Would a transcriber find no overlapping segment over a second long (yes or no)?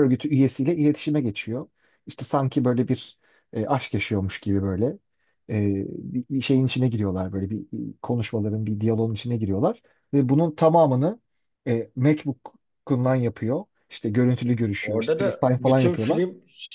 no